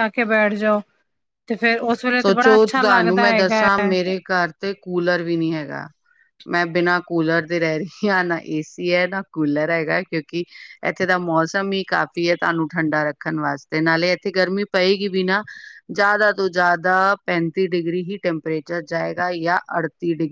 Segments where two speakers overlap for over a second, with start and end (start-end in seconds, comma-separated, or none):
2.2-3.7